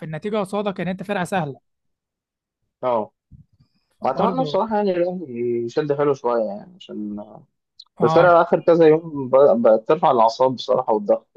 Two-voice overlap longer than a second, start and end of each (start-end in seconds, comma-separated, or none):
none